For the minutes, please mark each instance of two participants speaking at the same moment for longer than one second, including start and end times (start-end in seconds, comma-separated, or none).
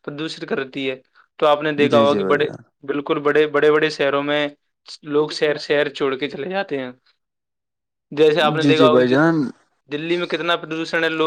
none